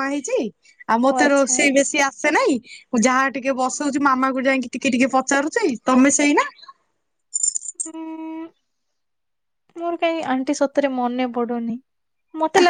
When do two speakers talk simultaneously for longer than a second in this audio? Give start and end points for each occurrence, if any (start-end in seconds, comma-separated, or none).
none